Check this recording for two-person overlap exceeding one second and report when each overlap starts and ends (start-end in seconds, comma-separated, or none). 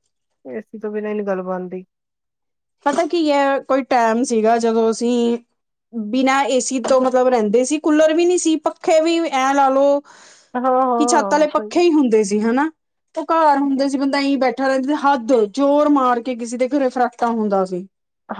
10.6-11.8